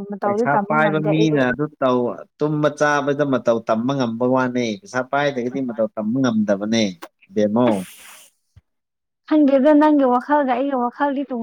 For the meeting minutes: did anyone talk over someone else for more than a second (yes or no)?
no